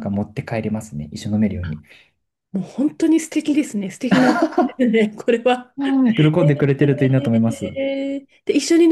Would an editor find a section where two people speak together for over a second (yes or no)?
no